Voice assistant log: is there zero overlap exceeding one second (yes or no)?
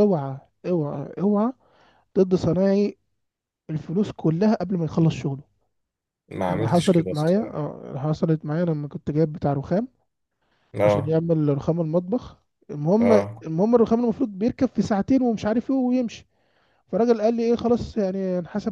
no